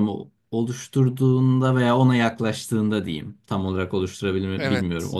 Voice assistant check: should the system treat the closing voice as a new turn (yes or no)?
no